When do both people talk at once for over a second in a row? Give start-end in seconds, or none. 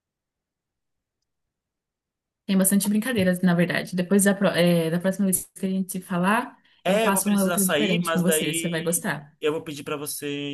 6.8-9.0